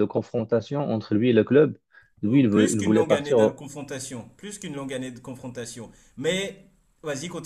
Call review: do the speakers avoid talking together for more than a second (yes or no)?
no